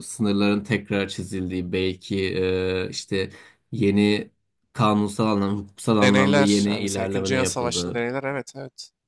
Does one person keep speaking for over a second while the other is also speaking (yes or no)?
yes